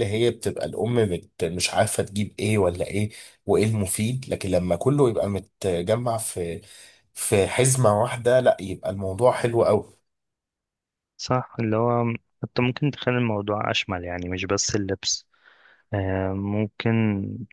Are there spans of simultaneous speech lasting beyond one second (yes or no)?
no